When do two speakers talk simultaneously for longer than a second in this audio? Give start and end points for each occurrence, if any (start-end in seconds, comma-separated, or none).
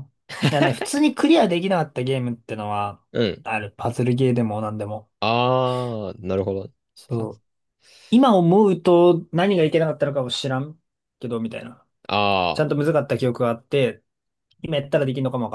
none